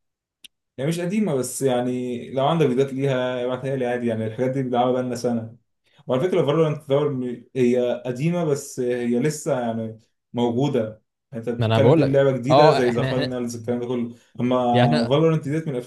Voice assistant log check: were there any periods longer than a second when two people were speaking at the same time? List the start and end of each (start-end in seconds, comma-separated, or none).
11.6-13.4